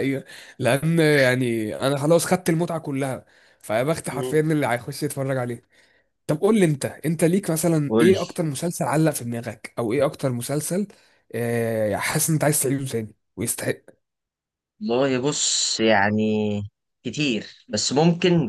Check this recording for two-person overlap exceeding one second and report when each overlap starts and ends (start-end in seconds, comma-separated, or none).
none